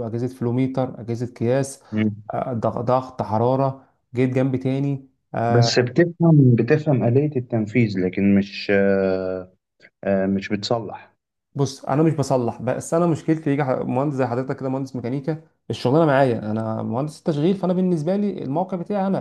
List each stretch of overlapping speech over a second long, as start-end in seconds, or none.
none